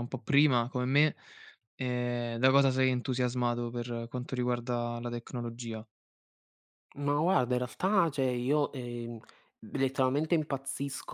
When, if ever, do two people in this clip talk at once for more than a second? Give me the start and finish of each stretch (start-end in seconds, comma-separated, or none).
none